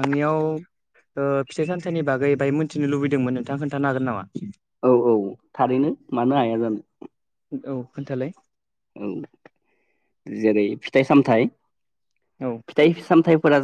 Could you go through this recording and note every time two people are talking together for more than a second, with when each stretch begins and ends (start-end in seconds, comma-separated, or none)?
none